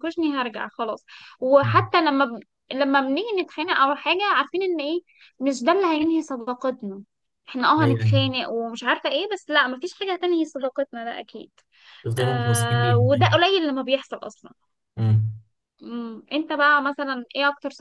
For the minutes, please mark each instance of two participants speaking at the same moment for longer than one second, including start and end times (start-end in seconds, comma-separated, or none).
12.2-13.4